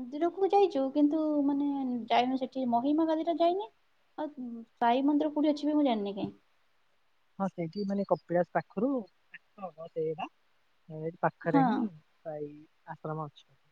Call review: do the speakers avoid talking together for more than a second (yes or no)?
yes